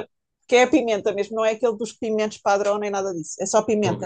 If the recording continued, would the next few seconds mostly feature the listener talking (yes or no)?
yes